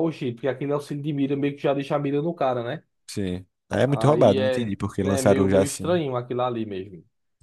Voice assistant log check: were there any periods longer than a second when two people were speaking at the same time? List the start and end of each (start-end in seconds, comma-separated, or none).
3.9-6.0